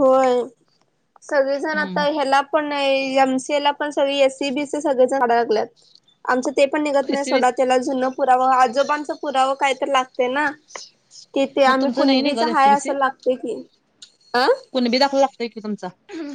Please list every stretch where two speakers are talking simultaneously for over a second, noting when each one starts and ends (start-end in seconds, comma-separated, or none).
11.7-12.9